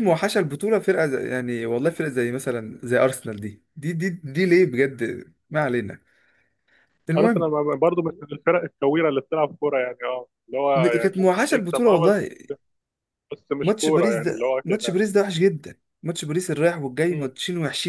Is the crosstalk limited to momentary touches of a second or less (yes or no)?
no